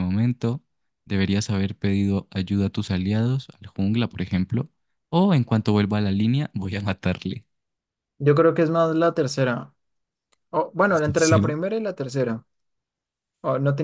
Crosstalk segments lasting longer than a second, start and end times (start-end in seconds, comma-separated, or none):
none